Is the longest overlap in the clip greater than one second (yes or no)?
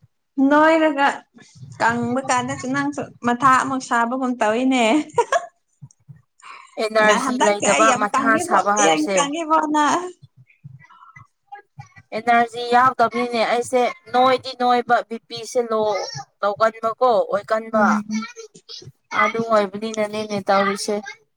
yes